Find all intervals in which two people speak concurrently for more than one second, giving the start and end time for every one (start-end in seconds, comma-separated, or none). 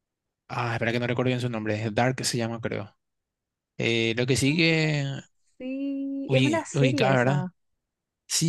6.3-7.5